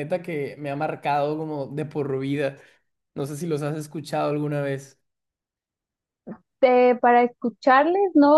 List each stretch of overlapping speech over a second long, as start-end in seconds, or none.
none